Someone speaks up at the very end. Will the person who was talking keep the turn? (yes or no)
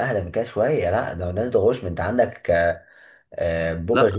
yes